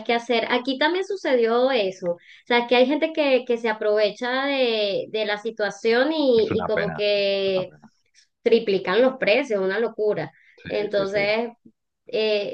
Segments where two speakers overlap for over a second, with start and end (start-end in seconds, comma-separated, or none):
6.3-7.7